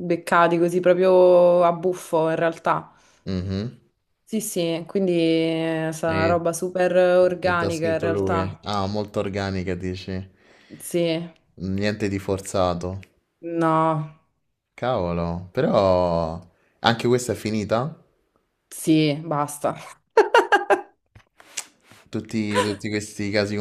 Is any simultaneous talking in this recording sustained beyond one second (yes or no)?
yes